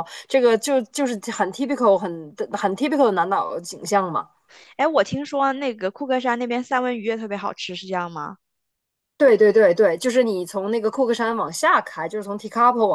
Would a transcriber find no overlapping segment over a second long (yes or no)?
yes